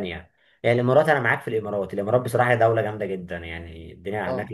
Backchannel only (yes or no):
yes